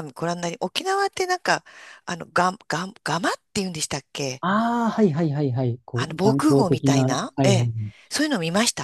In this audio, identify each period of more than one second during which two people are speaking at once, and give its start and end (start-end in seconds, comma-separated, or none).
5.9-7.7